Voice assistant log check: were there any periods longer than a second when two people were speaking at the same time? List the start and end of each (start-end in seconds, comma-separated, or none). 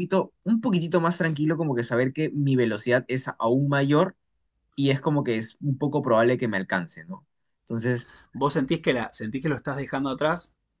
none